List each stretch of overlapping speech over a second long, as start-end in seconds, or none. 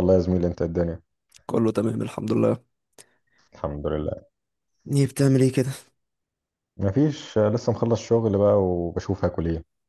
none